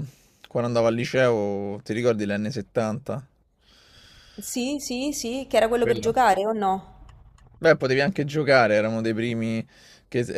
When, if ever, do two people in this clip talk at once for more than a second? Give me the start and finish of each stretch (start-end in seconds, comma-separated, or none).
none